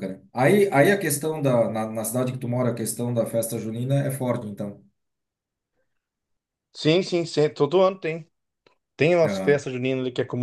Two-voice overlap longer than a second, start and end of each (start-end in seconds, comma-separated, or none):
none